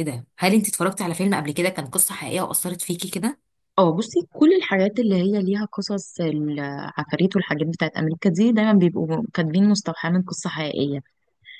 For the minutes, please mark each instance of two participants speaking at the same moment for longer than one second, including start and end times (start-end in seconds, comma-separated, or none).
none